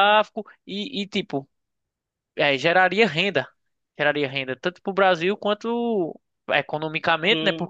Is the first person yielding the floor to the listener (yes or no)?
no